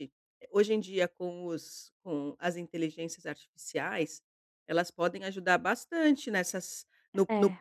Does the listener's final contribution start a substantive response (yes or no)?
no